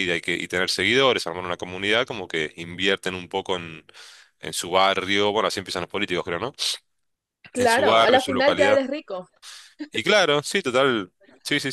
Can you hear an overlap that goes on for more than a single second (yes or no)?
yes